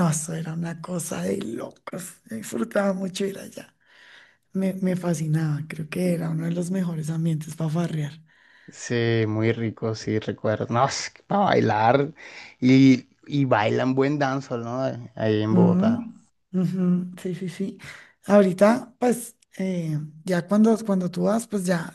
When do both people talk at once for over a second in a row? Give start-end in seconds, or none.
none